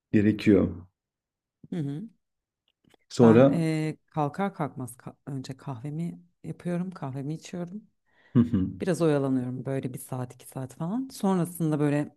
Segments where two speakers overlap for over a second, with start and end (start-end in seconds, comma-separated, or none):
none